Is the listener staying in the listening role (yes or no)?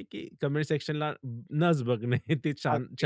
no